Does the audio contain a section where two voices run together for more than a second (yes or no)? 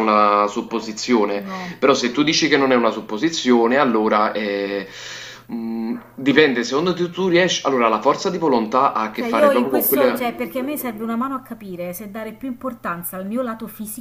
yes